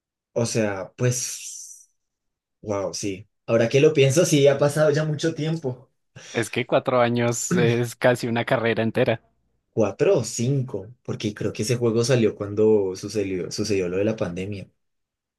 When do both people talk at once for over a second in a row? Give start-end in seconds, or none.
none